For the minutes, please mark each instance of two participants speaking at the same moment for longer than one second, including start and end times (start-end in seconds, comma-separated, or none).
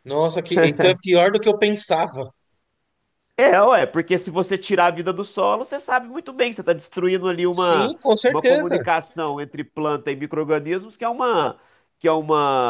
7.5-8.9